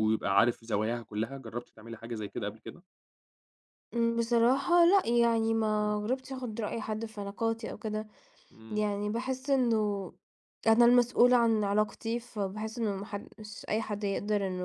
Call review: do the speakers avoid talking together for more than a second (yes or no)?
yes